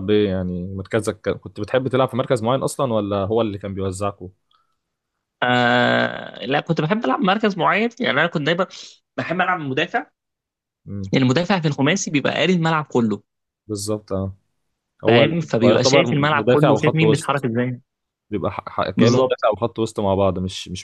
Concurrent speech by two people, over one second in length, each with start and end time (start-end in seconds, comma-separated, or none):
15.1-17.5